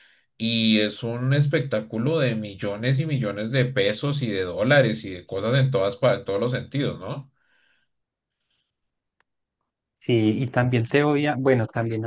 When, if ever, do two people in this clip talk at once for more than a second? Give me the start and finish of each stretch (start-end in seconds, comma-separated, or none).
none